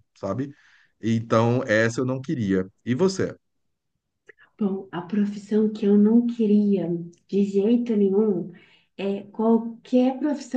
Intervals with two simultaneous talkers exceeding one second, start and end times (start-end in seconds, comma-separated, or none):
none